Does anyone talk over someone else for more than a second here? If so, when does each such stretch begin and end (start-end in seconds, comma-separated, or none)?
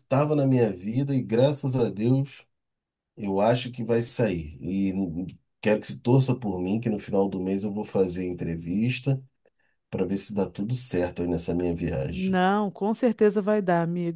none